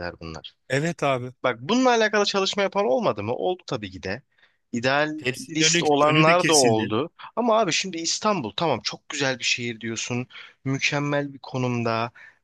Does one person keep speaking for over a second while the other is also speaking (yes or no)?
yes